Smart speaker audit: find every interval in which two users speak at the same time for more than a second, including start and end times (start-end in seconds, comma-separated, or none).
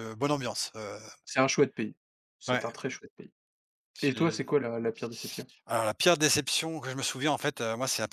none